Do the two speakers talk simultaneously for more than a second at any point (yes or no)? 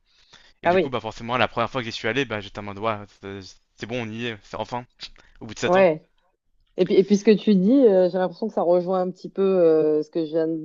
no